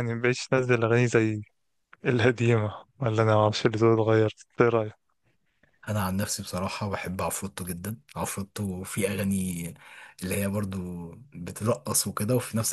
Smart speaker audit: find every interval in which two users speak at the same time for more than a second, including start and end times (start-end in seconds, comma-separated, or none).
none